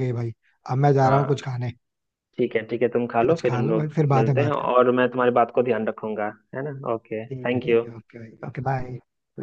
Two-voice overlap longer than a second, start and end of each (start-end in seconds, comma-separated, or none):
3.2-4.9